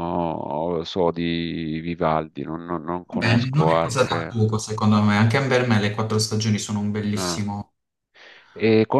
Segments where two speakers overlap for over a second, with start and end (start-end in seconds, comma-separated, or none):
3.1-4.4